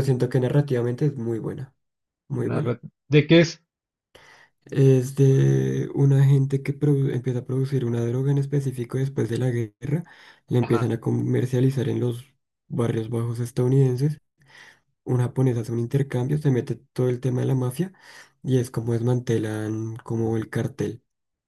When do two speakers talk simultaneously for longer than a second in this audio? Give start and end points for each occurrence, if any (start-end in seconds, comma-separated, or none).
none